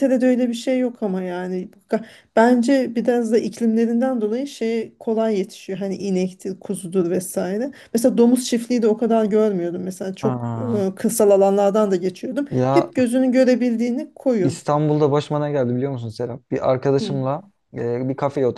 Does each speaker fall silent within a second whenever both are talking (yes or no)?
yes